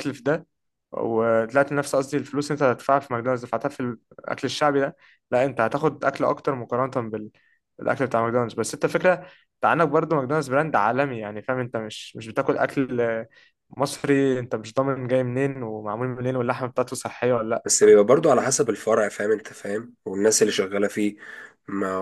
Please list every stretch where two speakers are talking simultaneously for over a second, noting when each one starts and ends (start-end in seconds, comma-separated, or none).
none